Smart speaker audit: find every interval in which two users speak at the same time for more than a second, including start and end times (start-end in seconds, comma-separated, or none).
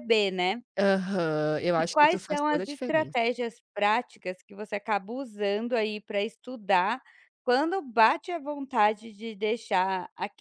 1.8-3.2